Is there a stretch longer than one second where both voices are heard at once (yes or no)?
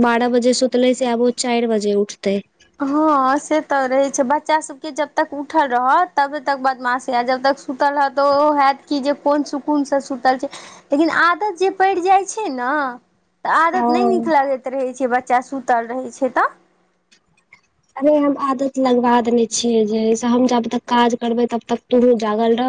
no